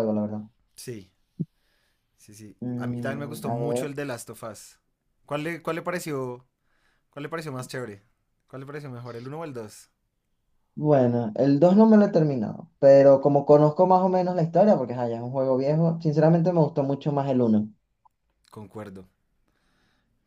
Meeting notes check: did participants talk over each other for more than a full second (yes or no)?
yes